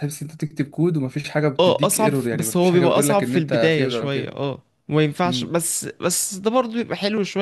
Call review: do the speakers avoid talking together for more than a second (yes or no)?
no